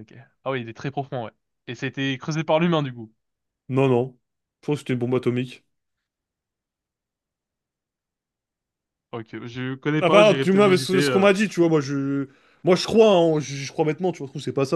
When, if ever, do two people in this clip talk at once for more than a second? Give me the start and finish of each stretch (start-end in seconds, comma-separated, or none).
10.0-11.3